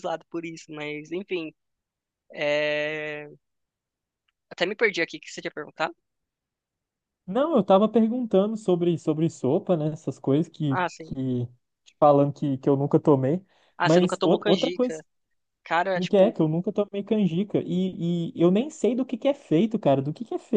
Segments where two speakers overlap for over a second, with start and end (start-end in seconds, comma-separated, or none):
13.8-15.0